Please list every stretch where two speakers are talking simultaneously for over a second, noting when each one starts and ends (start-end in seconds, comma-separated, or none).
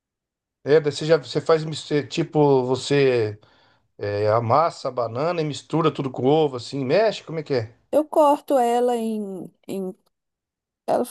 none